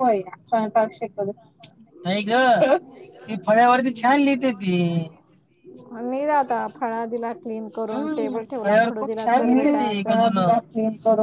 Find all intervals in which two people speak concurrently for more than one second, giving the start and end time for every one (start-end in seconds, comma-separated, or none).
8.6-10.2